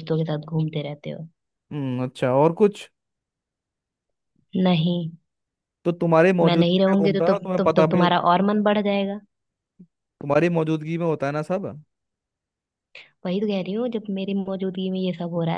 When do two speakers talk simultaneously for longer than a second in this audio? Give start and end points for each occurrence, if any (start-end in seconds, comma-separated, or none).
6.4-8.1